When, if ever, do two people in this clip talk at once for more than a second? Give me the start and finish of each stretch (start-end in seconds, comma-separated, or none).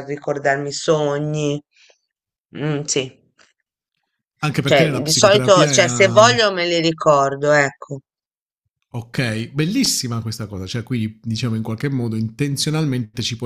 4.6-6.3